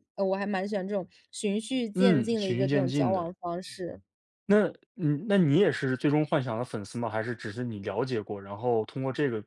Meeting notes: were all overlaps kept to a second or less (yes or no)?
no